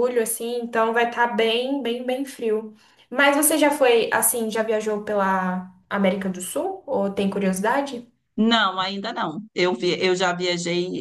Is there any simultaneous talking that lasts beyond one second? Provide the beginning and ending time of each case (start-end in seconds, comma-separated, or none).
none